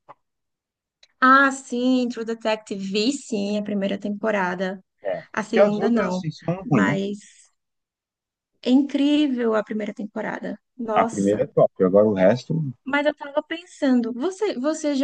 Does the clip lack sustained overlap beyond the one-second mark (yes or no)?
no